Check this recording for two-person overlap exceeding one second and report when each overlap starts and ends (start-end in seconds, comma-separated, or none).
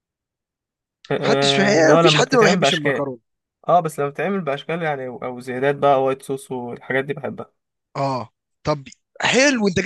1.2-3.0